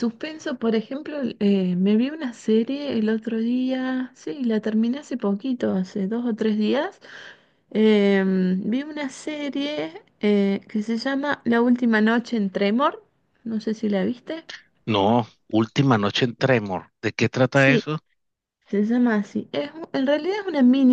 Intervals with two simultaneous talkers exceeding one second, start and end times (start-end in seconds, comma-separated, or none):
none